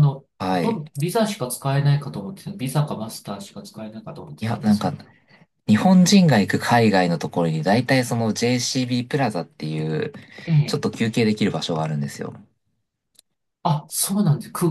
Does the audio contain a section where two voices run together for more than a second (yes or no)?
no